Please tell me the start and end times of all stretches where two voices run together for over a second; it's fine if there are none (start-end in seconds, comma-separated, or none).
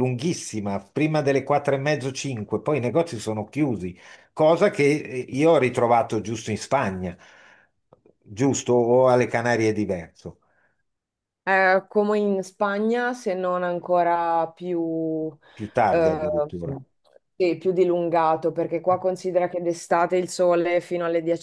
none